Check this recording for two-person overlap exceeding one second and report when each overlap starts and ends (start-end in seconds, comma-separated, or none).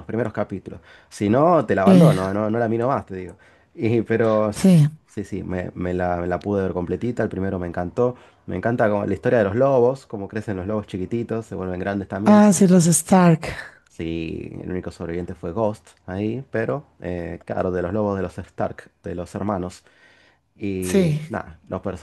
none